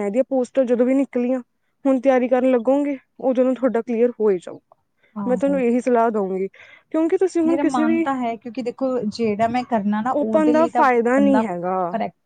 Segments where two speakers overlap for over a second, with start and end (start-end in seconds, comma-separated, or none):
10.2-11.4